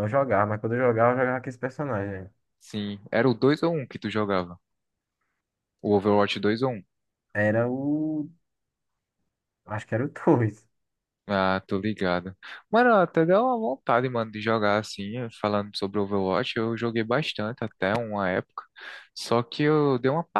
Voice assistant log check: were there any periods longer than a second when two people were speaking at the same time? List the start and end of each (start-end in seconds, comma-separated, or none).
none